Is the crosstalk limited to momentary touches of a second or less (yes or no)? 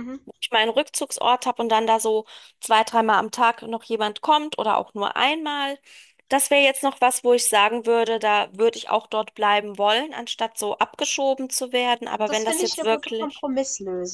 no